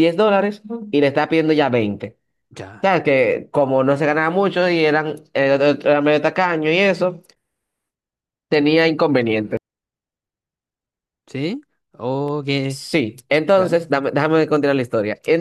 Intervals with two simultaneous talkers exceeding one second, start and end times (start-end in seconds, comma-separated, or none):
none